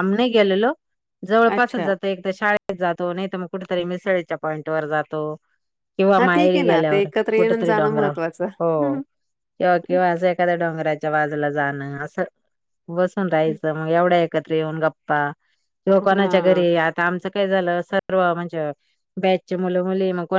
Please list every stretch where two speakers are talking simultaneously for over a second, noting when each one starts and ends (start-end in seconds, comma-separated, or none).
6.2-8.1